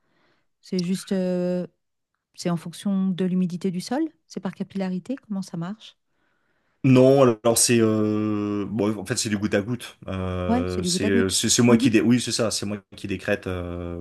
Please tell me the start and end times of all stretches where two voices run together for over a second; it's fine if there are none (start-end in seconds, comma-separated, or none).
10.5-11.9